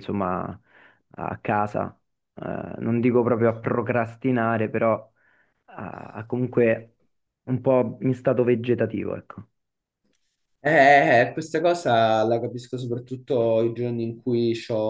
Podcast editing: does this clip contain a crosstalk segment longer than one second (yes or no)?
no